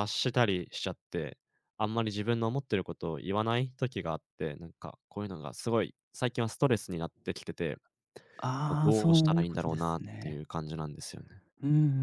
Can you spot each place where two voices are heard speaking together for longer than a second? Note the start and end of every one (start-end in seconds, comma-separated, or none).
8.7-10.4